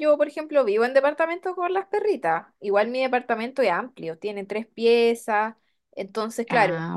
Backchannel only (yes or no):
yes